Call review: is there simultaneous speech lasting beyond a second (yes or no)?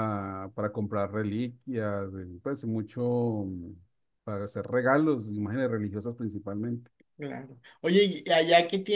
no